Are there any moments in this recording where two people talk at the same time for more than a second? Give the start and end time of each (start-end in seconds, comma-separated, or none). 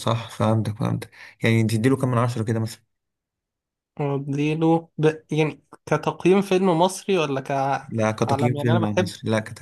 7.9-9.1